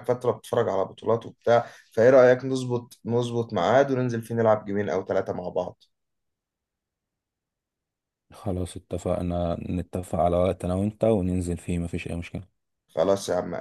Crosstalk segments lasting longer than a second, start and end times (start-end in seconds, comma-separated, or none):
none